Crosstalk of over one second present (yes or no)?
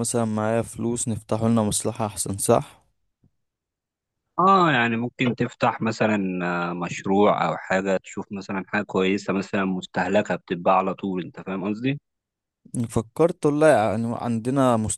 no